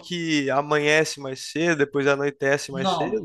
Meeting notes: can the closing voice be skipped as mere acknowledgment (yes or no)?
no